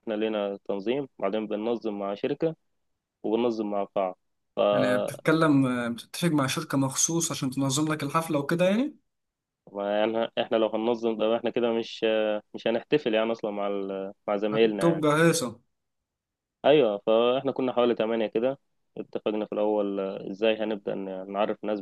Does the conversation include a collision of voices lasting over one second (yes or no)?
no